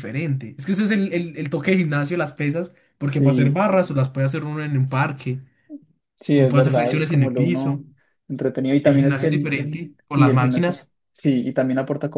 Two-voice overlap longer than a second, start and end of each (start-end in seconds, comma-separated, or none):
6.3-7.8, 8.8-10.8